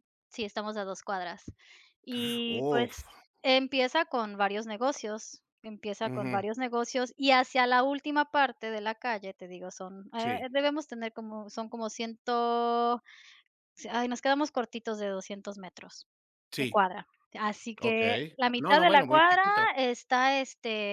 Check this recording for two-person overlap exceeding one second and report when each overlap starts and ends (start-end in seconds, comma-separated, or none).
17.8-19.7